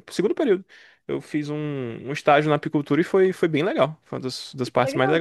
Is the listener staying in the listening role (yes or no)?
no